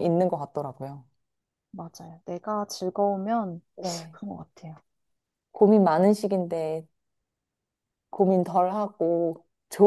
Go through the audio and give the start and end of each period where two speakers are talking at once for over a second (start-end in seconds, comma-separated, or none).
none